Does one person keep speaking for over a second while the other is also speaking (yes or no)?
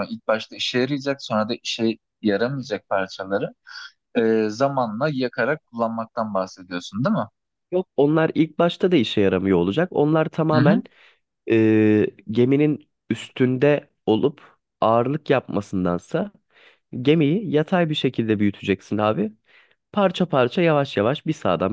no